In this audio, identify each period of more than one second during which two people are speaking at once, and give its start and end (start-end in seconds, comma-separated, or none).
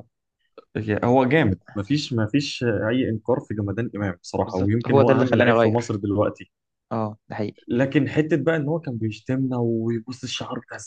4.5-6.0